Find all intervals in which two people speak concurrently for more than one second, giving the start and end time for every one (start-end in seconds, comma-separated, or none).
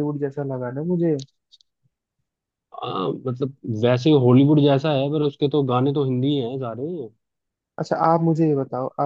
none